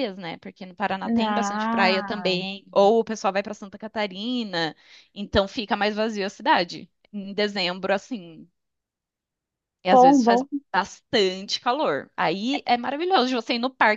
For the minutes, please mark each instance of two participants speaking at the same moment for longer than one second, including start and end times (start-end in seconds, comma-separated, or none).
1.1-2.4